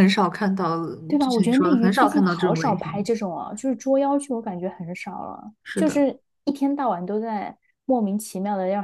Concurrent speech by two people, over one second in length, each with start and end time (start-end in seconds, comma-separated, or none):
1.2-3.1